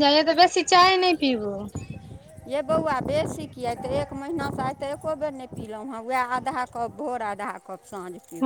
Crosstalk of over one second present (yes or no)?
no